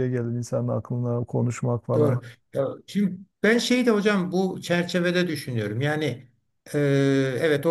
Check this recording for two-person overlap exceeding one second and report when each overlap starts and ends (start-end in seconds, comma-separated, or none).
none